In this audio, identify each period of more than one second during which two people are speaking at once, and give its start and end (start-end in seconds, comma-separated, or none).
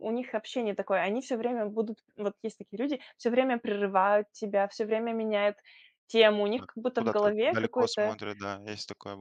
6.6-8.2